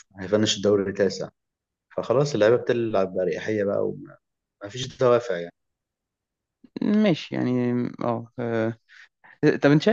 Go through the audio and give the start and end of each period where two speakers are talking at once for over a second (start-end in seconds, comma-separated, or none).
none